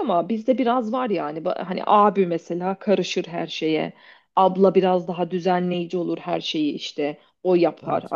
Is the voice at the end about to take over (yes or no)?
no